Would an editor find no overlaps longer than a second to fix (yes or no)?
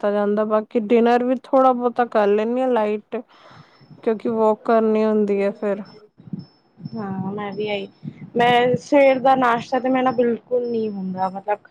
yes